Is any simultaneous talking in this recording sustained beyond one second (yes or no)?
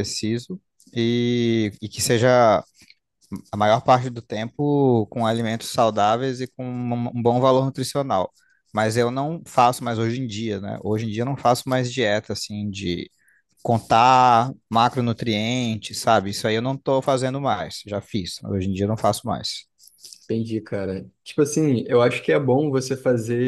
no